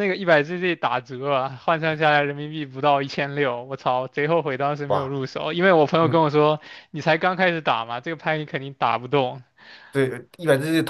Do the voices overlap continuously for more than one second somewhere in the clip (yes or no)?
no